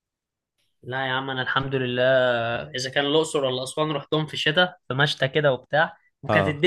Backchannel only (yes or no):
yes